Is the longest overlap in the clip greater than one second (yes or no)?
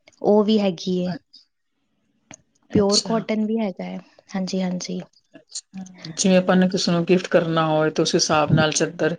no